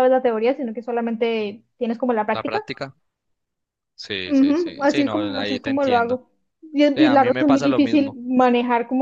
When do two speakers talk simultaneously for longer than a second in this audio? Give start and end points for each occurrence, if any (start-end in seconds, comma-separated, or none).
4.2-6.2, 6.9-8.2